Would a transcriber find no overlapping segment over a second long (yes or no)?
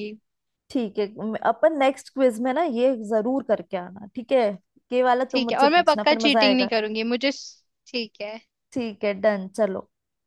no